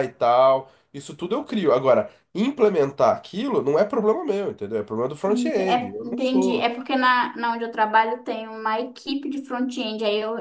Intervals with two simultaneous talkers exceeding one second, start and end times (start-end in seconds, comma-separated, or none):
5.3-6.7